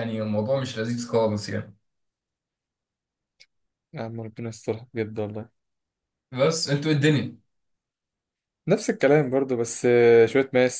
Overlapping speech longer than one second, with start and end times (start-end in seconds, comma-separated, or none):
none